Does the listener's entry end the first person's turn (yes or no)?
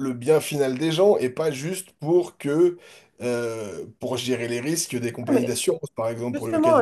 yes